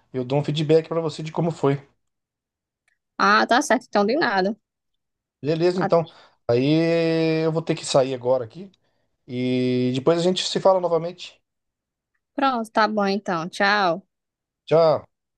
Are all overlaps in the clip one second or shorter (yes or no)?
yes